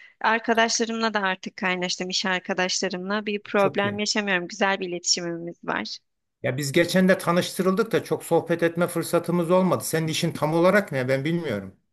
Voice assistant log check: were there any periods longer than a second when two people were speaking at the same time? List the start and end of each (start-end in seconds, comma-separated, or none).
none